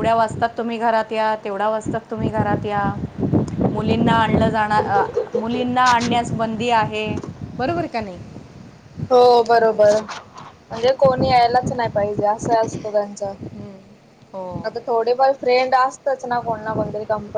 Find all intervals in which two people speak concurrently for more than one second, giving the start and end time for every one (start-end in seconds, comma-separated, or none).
none